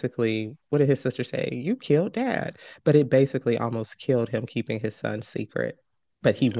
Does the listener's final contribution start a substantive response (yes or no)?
no